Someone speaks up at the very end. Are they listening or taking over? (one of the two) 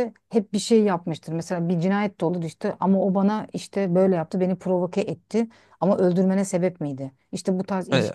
listening